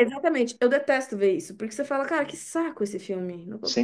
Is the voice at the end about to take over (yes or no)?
yes